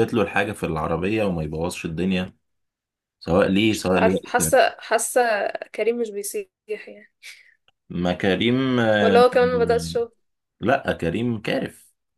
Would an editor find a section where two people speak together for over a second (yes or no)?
no